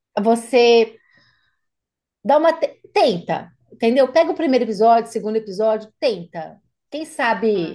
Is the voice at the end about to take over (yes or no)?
no